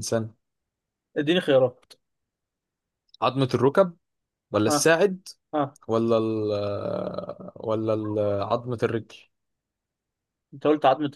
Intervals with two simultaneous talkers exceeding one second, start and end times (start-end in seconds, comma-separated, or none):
none